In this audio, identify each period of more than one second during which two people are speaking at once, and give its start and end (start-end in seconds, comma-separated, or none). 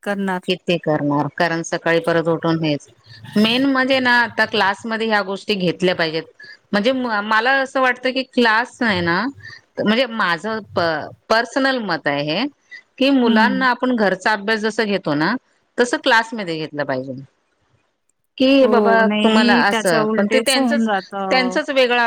18.6-21.6